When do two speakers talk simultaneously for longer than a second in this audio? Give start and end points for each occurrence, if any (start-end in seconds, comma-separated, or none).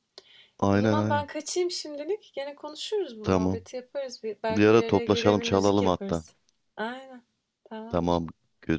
4.5-6.2